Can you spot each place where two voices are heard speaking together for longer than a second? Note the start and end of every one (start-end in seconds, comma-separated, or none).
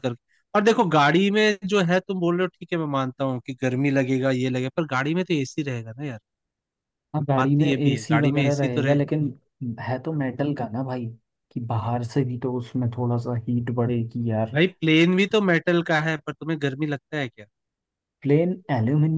7.3-9.0